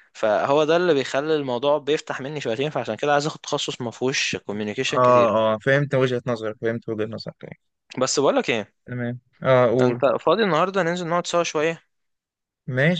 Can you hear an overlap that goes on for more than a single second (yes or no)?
no